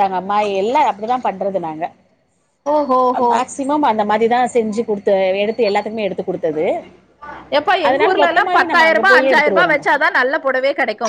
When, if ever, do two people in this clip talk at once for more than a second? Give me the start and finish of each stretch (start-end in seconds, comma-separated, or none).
7.9-9.8